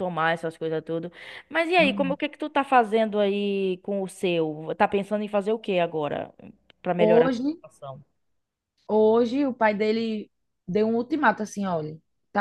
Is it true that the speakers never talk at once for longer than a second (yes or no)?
yes